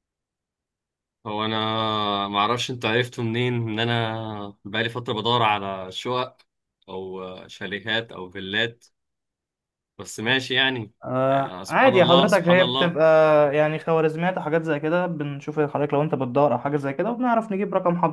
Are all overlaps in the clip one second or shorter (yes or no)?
no